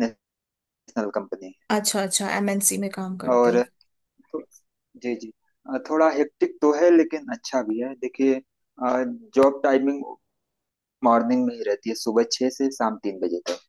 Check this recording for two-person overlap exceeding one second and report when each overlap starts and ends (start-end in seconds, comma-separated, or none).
none